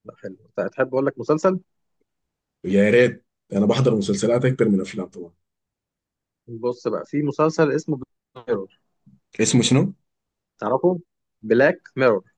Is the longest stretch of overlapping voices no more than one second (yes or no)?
yes